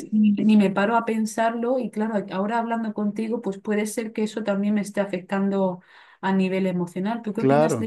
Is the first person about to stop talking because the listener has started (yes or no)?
yes